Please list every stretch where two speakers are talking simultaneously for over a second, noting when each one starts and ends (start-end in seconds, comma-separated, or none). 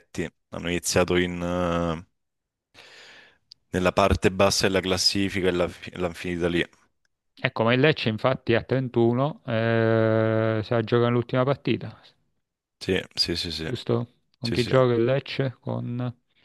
none